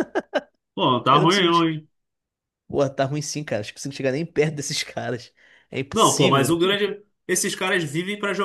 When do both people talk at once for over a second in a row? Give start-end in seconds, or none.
none